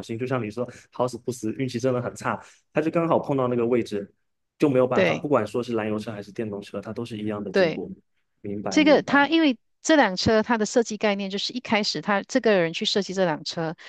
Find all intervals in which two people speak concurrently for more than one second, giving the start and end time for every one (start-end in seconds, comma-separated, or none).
none